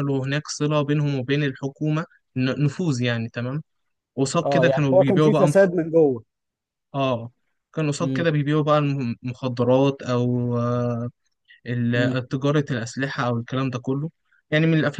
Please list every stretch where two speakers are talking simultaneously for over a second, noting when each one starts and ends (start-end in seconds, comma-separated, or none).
4.4-5.7